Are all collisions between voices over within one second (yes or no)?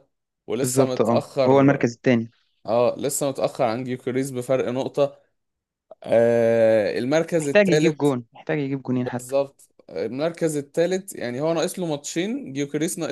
no